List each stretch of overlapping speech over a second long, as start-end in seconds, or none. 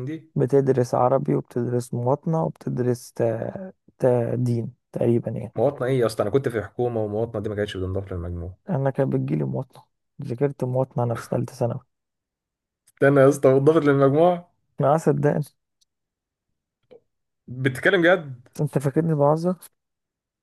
none